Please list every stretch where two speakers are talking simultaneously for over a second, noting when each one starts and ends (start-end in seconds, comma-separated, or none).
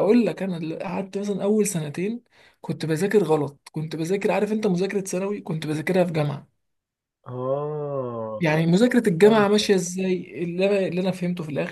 none